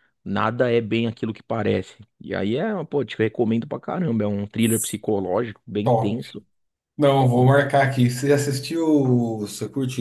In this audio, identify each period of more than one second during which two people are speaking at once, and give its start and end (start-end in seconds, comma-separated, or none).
none